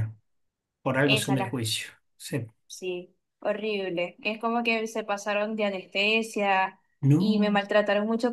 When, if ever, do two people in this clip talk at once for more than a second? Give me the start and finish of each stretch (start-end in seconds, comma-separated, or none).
none